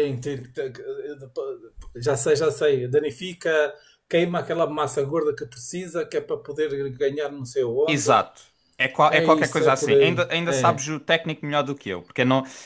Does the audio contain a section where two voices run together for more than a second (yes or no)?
yes